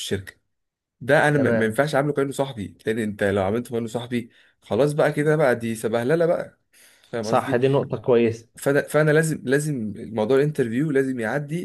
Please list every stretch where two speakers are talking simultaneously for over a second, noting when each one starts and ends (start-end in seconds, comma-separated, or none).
none